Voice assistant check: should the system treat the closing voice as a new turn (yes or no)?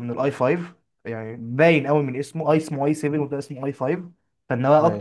no